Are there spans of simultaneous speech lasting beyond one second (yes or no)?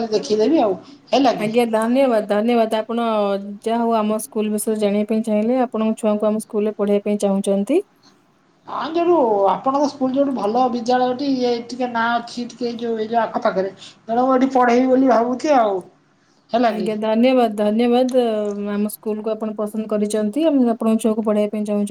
no